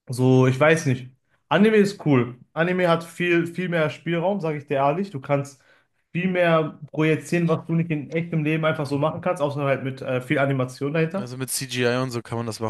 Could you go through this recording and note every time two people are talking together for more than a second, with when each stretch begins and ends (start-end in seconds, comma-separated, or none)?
none